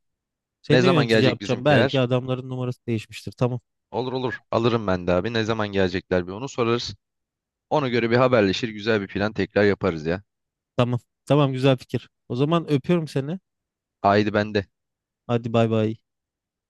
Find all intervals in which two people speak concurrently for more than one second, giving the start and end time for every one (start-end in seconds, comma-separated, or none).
0.7-2.0